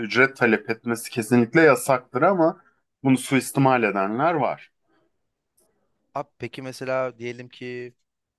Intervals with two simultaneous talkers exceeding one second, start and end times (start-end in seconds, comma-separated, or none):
none